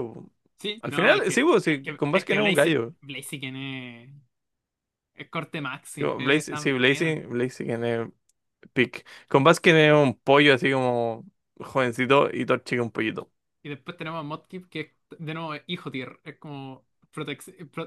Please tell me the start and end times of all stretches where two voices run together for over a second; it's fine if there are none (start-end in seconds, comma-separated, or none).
0.8-3.0, 6.0-7.2